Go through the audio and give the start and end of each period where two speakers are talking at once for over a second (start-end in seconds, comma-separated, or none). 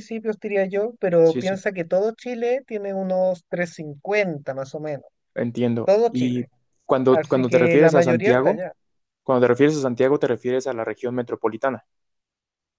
7.1-8.6